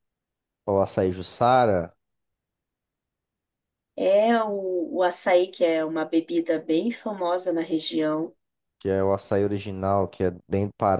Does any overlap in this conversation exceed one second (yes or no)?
no